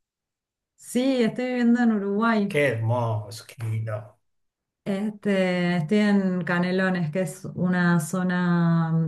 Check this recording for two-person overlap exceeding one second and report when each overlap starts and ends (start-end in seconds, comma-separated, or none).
none